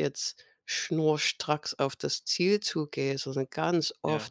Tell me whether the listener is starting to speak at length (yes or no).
no